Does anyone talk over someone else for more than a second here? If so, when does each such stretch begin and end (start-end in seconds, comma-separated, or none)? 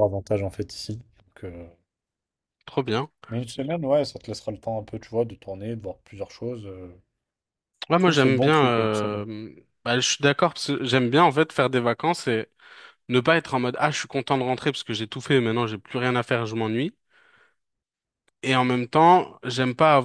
7.9-9.2